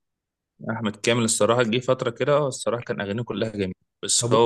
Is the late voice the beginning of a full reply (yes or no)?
no